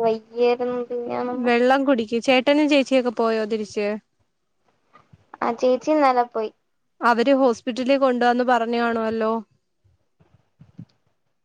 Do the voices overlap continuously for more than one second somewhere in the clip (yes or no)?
no